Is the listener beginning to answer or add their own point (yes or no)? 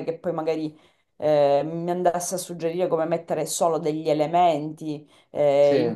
no